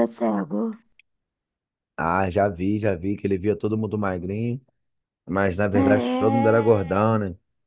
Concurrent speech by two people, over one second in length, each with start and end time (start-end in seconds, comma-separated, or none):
5.7-7.1